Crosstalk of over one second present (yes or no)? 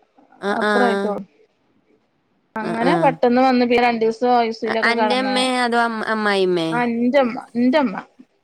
no